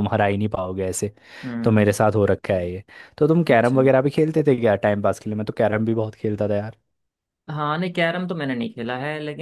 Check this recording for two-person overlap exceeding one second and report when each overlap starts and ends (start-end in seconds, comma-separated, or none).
none